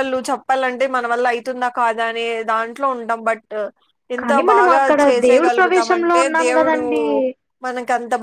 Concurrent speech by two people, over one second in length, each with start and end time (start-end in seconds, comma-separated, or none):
4.2-6.8